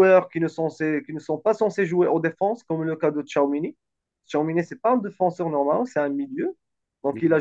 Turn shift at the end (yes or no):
no